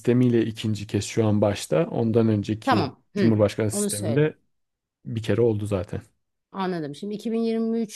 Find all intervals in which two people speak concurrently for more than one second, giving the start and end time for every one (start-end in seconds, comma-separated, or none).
2.6-4.3